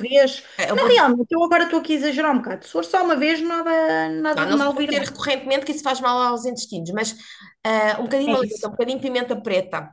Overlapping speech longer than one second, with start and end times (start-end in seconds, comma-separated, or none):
none